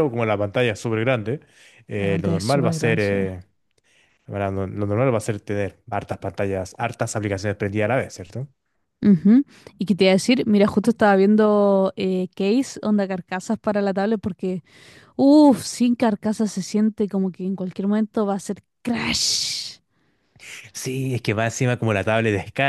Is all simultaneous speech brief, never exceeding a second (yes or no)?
no